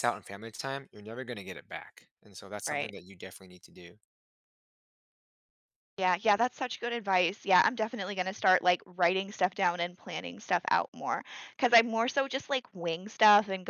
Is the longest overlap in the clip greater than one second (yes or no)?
no